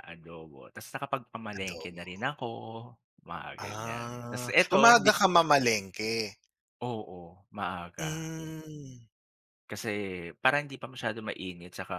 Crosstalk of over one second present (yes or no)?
yes